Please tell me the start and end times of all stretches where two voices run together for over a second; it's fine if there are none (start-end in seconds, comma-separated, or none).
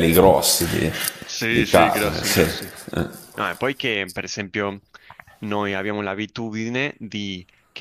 1.5-2.7